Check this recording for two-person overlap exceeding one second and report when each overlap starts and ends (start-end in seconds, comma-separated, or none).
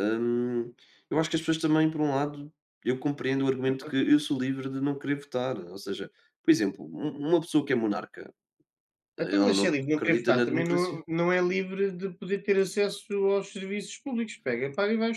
9.2-11.0